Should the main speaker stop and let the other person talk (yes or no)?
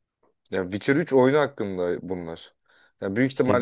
no